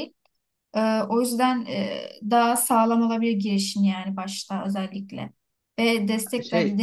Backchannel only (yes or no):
yes